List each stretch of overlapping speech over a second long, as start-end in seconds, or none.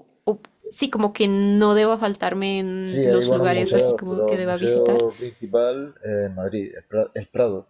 2.8-5.1